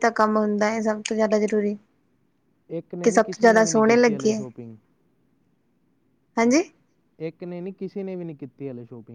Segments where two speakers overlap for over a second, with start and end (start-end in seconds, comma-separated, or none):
3.0-4.4